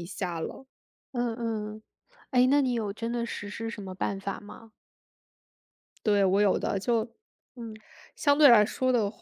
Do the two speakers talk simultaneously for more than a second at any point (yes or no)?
no